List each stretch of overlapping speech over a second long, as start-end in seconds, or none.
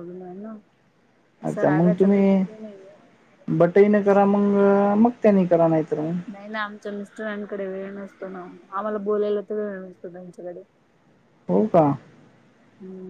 none